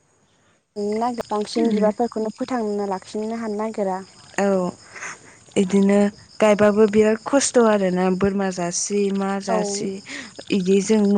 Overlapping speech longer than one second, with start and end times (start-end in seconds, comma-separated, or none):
none